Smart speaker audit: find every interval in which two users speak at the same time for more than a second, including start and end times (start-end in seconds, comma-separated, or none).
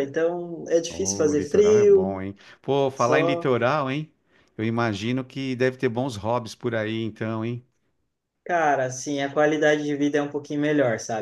0.9-2.2